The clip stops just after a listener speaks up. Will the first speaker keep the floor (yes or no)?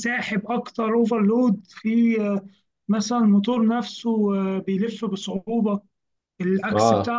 no